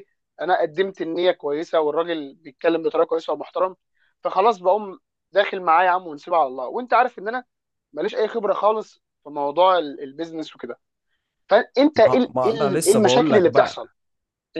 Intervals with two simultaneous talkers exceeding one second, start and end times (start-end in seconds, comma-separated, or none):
11.9-13.9